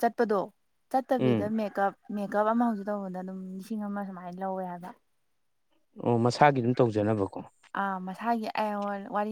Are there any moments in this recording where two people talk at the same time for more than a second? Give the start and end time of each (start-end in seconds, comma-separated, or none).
none